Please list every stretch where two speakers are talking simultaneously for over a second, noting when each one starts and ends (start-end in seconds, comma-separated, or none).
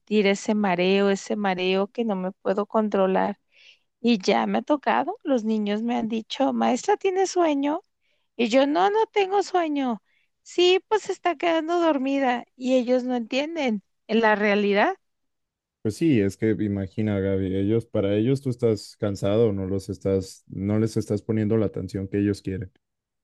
none